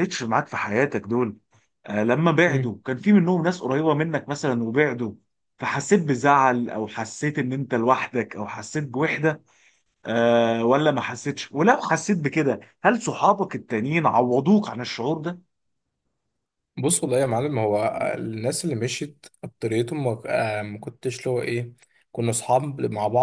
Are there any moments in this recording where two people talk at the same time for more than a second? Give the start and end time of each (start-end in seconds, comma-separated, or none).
none